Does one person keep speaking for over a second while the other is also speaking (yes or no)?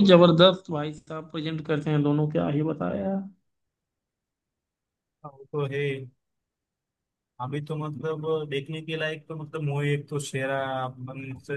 no